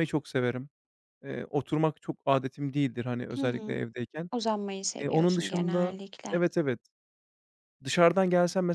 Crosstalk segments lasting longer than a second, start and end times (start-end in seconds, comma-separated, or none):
5.0-6.4